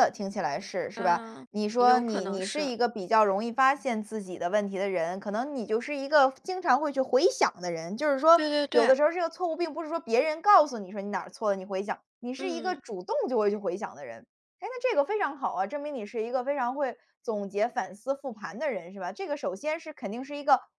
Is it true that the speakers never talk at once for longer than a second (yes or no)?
no